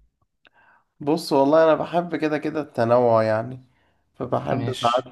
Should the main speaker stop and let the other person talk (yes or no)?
no